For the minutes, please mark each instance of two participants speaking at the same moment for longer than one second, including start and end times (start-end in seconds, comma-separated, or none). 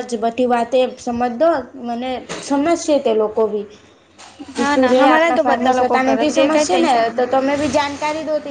4.7-7.2